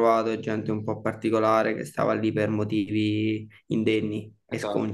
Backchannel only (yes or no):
no